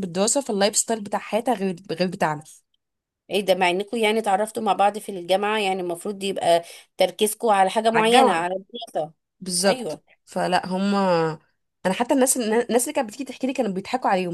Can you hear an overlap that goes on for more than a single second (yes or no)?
no